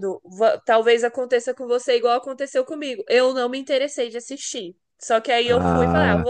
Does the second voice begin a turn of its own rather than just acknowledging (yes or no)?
no